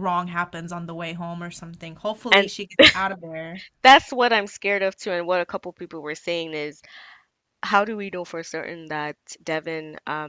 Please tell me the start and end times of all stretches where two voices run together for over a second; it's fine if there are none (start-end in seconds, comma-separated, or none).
none